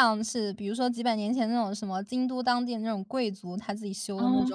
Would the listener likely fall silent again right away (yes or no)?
yes